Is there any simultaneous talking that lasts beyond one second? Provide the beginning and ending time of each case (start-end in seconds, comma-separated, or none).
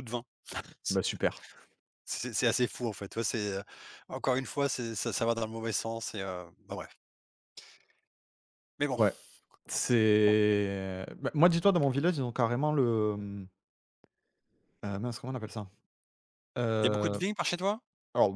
none